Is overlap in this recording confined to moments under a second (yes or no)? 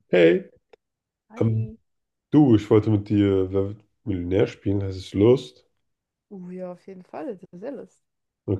yes